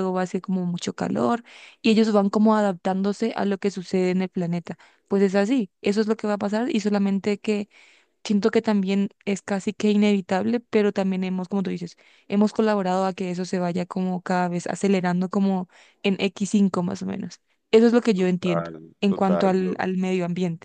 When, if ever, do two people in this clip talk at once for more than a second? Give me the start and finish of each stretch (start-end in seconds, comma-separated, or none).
18.1-19.8